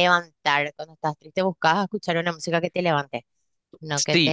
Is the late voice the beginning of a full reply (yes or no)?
yes